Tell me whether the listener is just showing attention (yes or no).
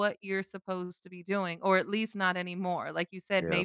yes